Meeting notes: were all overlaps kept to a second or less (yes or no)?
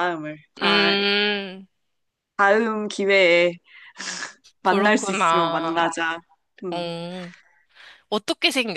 no